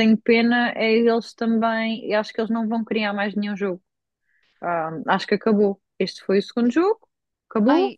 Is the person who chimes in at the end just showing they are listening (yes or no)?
yes